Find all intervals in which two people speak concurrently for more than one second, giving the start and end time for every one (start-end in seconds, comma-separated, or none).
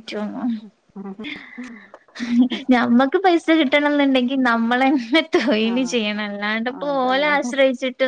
5.7-7.3